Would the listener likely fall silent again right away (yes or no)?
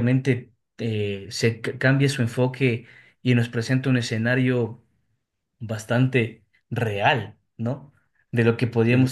yes